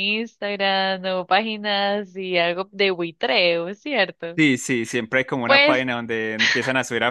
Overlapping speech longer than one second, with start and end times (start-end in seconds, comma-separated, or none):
none